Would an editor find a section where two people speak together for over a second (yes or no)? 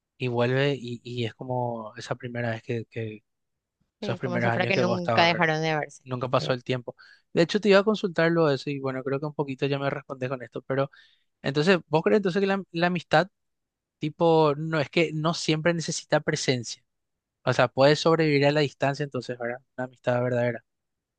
yes